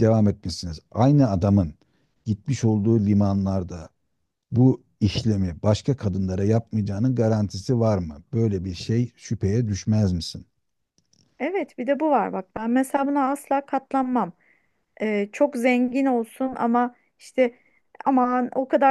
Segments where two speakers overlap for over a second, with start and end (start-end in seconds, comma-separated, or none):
none